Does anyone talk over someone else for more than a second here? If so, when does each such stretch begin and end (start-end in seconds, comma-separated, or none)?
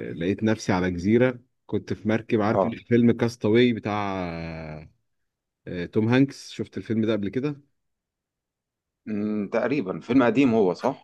none